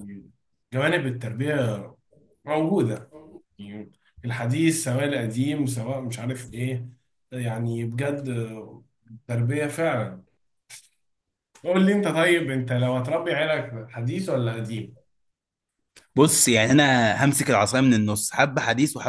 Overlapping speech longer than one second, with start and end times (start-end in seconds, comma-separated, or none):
none